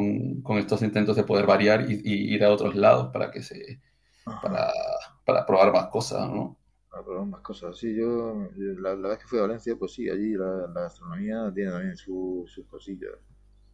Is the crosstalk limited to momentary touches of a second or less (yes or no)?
yes